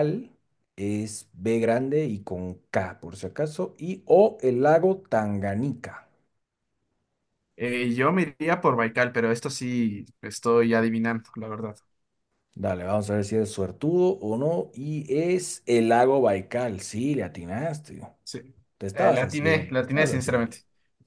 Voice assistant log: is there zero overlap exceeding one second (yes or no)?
no